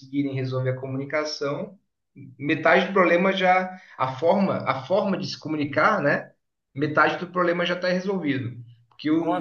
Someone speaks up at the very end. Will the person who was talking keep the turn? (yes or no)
yes